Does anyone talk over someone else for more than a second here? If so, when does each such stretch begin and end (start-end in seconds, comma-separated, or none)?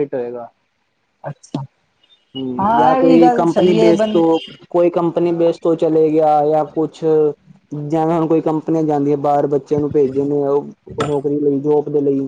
2.6-4.2